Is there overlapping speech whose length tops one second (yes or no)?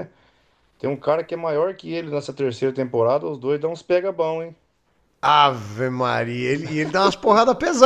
no